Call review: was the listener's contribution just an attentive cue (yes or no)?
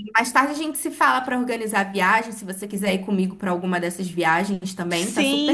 no